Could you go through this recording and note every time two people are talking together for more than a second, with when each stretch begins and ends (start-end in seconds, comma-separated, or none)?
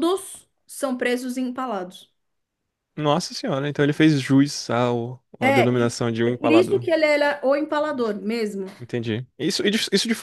5.4-6.9